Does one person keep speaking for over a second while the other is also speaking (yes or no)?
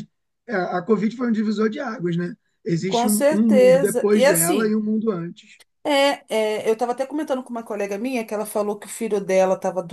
yes